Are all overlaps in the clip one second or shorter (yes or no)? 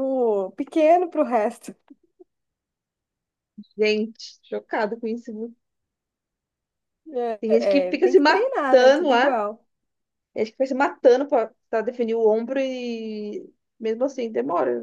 no